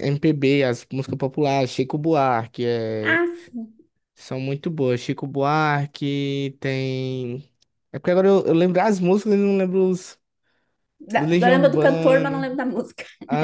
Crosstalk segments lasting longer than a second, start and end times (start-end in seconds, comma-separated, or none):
11.2-12.5